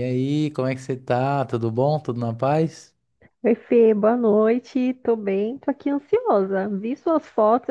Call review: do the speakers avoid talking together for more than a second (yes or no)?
yes